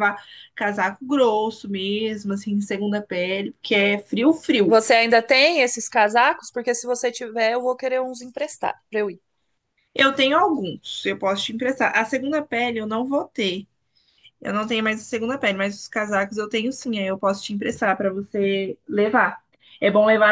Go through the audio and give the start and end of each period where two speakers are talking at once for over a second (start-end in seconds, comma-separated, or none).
none